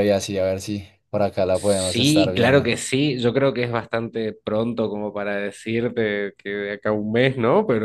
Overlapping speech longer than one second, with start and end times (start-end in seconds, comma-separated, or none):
1.5-2.7